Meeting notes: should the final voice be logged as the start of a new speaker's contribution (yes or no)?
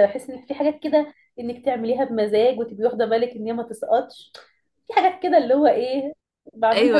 yes